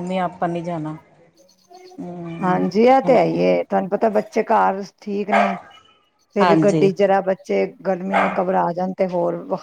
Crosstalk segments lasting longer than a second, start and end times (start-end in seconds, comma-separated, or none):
none